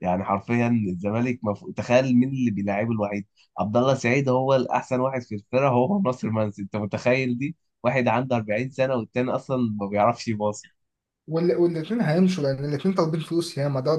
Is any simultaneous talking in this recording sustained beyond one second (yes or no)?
no